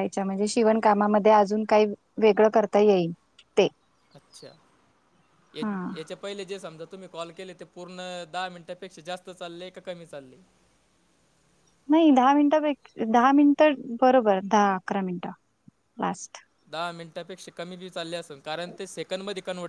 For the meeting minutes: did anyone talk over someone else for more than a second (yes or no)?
no